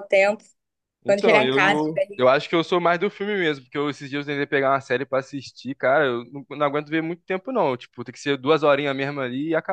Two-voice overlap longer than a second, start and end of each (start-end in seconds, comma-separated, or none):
1.1-2.3